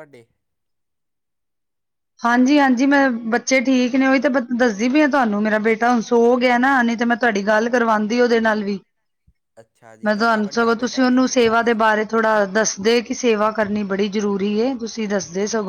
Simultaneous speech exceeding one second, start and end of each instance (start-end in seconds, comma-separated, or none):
10.0-11.9